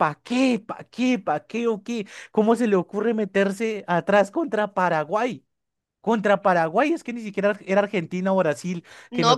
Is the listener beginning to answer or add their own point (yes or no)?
yes